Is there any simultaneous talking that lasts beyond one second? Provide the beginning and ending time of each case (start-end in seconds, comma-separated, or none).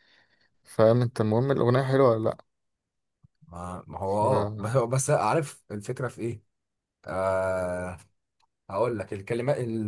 none